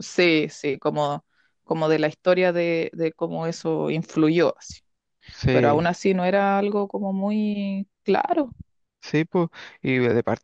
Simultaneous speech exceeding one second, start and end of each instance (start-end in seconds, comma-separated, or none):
none